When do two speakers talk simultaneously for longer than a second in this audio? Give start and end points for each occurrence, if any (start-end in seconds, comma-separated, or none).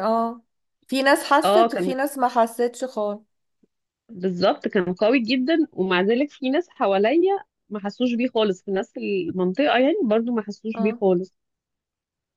none